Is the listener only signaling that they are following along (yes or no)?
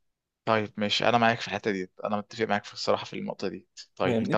yes